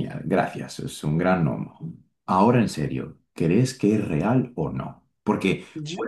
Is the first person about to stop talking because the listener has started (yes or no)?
no